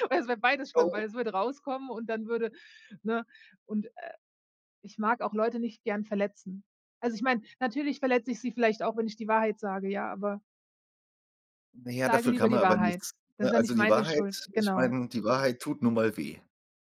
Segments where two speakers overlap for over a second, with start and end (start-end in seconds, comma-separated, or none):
11.9-14.9